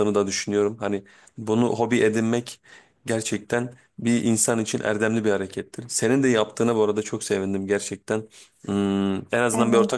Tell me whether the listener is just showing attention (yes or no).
no